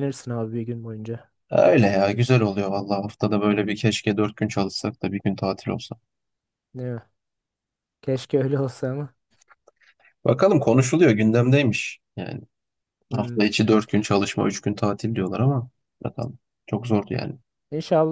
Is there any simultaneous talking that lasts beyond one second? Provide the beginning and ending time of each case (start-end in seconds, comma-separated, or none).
none